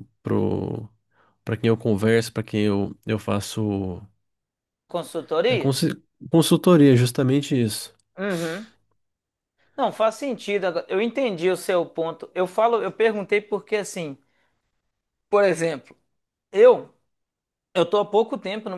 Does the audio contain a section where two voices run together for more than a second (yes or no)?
no